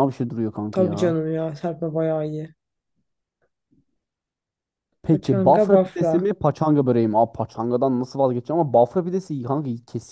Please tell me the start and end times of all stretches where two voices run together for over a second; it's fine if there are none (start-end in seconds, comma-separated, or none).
5.0-6.3